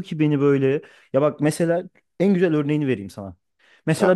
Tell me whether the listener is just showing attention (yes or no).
yes